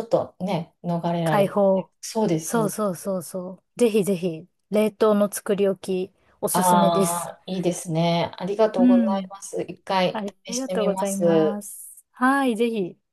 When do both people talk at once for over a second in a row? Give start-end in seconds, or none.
10.1-11.6